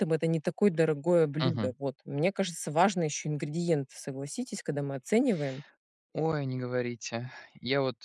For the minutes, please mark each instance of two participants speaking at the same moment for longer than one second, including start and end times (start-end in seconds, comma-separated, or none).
none